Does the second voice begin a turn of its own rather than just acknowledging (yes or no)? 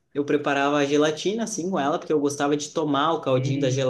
no